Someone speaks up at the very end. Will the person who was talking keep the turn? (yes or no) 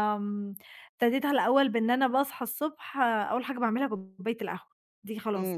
no